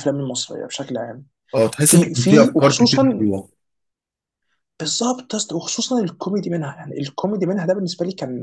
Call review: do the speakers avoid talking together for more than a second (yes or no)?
no